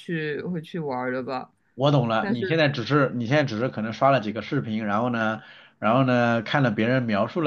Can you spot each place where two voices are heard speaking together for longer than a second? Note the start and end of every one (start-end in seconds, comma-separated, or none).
none